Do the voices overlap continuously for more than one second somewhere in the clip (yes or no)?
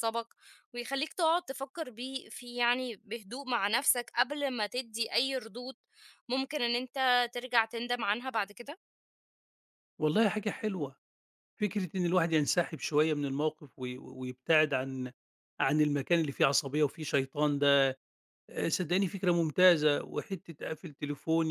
no